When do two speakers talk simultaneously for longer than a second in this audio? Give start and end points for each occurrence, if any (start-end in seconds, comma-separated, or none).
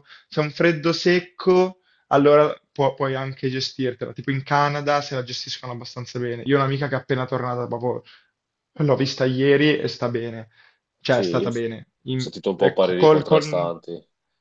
12.2-13.7